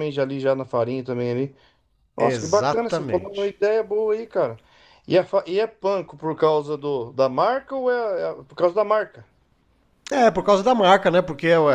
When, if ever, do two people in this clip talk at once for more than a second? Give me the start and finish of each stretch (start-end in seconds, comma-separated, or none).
2.2-3.5